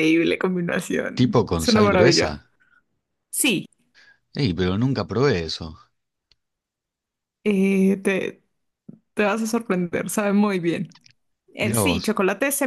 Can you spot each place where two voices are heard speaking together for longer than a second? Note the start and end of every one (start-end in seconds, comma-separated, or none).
1.1-2.4